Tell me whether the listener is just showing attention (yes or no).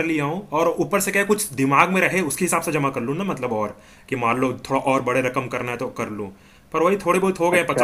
yes